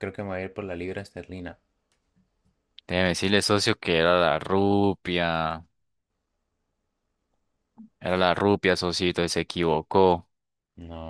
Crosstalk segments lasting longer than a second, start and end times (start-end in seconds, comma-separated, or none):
none